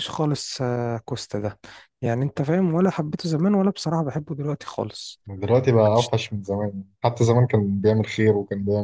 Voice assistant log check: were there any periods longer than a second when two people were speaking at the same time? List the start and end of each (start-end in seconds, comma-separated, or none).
none